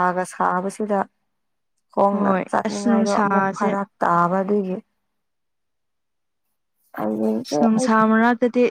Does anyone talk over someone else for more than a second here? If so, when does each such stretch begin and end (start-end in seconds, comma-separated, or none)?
2.1-3.7